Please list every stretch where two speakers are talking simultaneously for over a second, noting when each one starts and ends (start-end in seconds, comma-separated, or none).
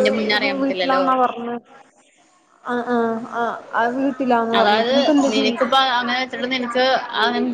none